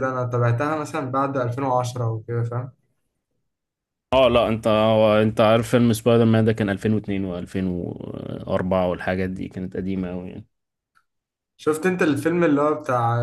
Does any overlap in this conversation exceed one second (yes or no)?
no